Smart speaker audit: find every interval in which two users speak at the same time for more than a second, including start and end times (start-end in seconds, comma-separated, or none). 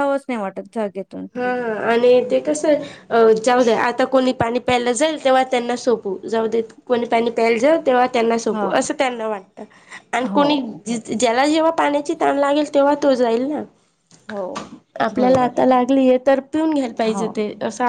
none